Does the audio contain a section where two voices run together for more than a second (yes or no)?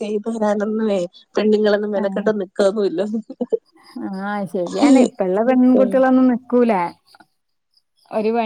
no